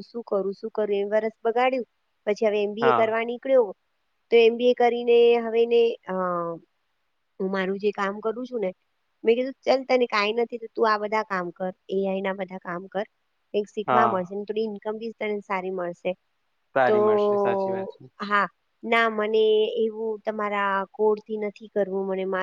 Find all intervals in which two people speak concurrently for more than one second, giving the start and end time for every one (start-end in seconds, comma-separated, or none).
none